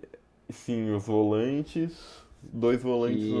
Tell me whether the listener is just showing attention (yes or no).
yes